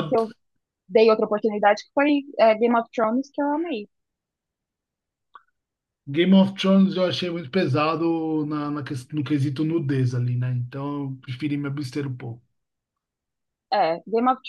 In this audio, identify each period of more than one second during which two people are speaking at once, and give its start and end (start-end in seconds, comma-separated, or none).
none